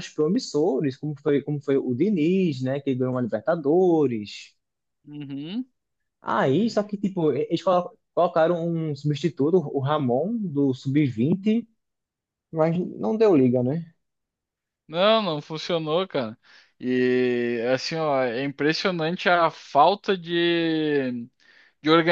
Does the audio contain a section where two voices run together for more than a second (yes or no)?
no